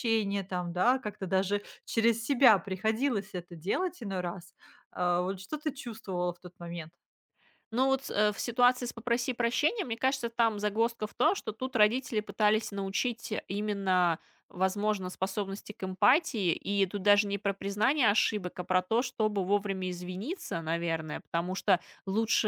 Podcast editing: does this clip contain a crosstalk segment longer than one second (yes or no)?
no